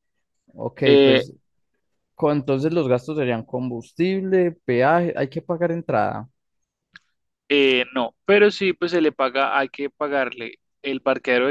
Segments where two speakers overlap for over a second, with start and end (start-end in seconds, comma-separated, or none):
none